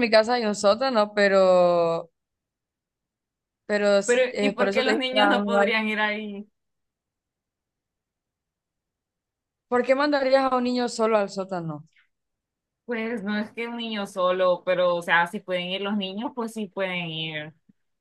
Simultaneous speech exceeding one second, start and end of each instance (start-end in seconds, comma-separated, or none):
4.0-5.7